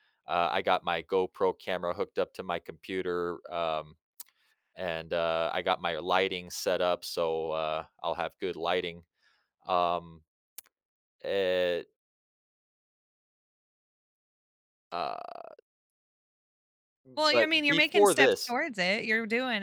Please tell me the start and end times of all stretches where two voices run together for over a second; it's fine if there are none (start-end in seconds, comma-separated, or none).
17.3-18.6